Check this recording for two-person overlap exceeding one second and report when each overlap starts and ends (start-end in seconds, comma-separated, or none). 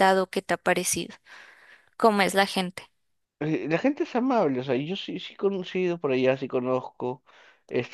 none